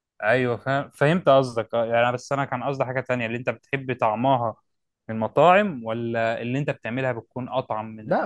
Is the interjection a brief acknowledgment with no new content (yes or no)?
no